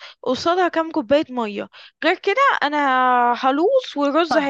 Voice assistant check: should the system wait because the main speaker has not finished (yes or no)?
no